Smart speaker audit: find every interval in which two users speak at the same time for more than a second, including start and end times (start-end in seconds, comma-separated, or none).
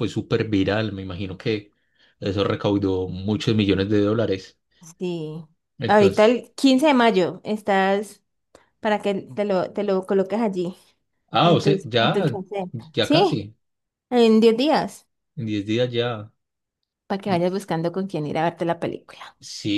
11.4-13.4